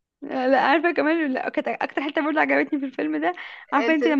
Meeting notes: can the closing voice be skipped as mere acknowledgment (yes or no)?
yes